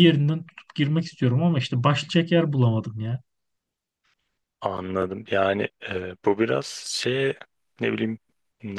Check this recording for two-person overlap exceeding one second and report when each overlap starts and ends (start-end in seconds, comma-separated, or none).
none